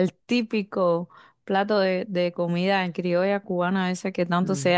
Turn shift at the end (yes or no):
no